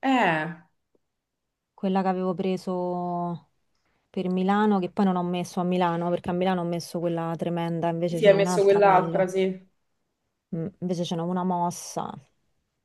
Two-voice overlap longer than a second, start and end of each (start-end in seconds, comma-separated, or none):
8.1-9.4